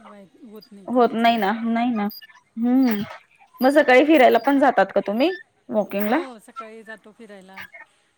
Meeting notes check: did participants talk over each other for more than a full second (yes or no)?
no